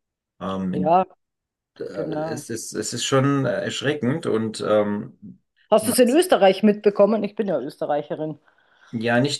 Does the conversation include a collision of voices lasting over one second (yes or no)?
no